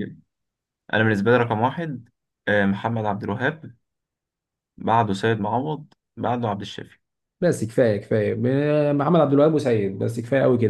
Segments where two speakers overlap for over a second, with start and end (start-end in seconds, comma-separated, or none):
none